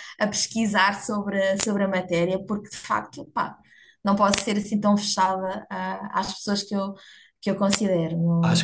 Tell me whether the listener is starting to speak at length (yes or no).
yes